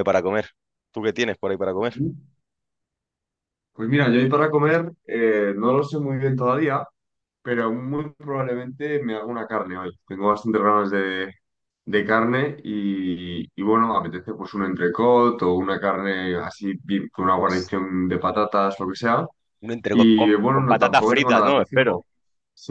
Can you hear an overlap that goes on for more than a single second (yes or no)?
yes